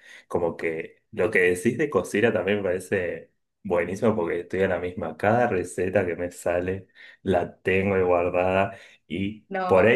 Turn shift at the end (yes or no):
no